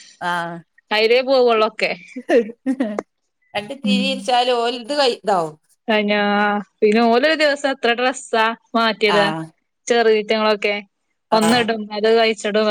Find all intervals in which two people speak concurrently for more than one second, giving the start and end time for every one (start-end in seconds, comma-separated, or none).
none